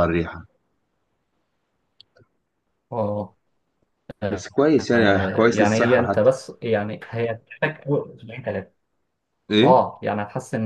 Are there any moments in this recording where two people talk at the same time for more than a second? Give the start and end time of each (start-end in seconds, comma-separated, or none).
4.8-6.3